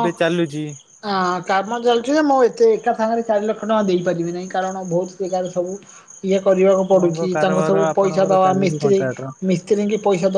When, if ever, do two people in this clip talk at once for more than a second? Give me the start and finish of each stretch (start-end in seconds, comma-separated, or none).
6.9-9.0